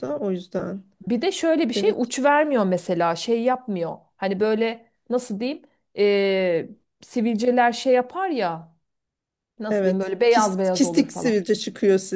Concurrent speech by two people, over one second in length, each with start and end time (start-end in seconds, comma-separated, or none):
9.7-11.4